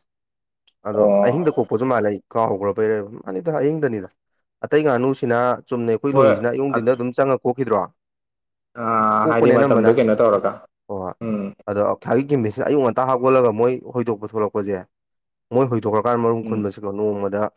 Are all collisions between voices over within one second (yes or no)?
yes